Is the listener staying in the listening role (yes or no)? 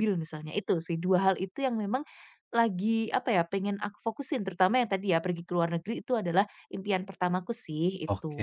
no